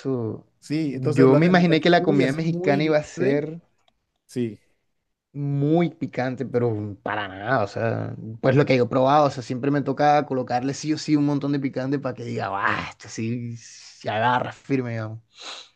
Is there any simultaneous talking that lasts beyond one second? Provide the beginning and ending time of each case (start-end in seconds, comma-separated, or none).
0.9-3.5